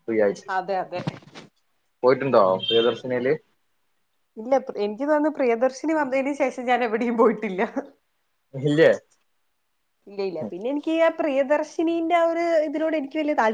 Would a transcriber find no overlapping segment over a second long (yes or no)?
yes